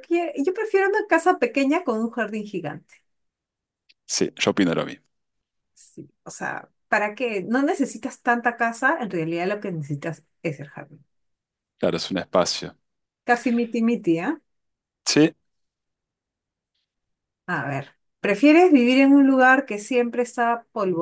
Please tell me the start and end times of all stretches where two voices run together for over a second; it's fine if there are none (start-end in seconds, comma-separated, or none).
none